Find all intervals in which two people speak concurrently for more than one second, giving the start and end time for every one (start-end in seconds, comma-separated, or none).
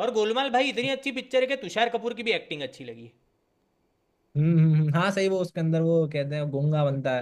none